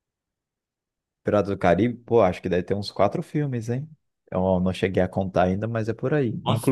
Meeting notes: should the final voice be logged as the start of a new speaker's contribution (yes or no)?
no